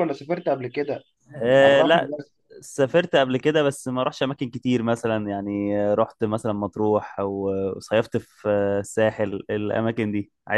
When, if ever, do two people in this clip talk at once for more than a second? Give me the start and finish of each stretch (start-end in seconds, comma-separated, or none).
none